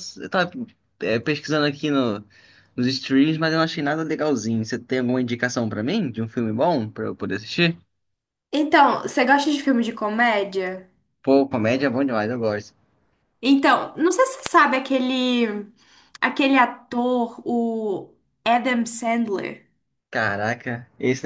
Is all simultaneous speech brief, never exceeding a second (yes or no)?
yes